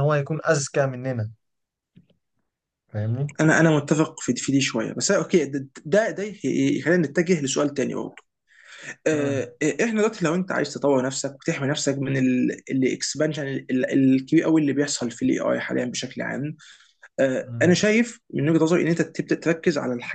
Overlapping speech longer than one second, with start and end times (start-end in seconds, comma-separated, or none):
none